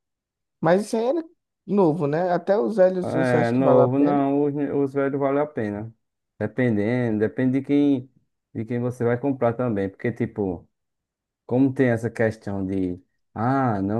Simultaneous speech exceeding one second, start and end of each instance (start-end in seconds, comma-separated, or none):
3.0-4.2